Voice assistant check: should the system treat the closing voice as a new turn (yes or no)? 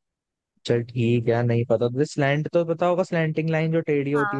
yes